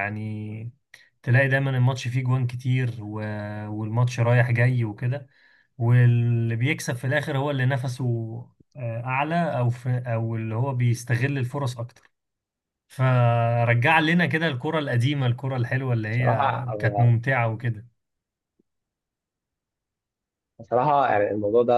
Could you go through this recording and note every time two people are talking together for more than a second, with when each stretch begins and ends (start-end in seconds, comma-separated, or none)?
none